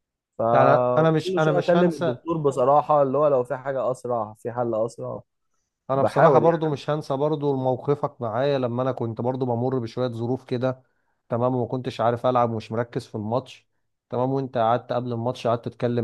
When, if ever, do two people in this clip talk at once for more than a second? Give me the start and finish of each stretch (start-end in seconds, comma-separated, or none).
0.5-2.2